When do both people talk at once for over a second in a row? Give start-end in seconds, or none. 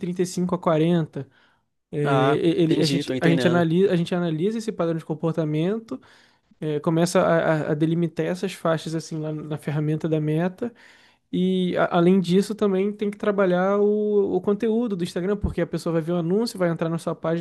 2.0-3.7